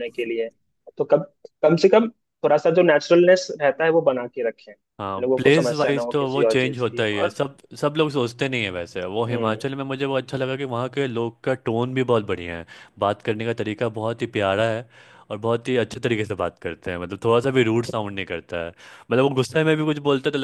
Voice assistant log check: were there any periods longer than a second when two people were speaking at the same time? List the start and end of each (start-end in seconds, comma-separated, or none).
5.2-7.4